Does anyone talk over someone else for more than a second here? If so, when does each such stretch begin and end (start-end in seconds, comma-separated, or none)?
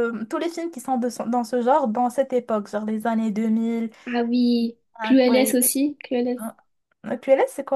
none